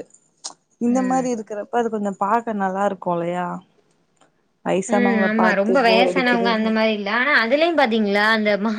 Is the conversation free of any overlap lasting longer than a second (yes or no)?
no